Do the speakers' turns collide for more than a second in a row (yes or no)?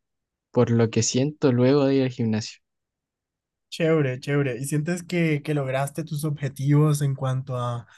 no